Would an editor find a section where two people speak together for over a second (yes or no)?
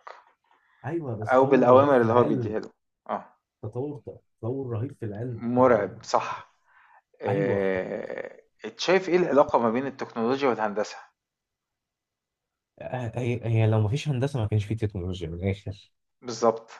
yes